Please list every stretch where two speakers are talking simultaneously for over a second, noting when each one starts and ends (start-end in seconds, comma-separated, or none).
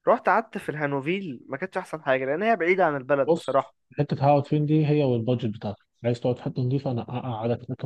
none